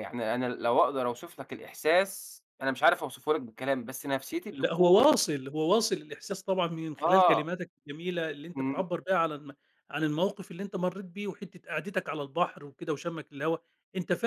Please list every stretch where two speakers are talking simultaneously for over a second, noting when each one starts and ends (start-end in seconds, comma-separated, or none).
none